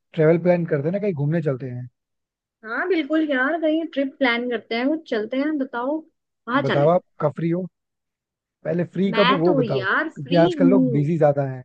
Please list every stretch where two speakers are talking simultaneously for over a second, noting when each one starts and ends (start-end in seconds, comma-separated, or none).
9.1-11.0